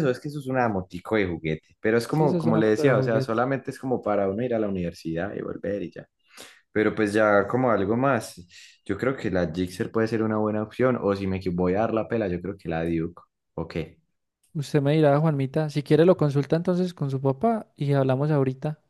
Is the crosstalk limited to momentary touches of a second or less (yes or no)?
no